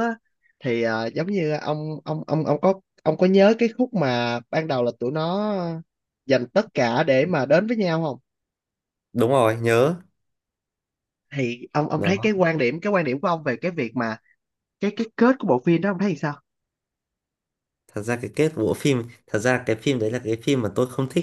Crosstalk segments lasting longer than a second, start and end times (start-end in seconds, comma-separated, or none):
none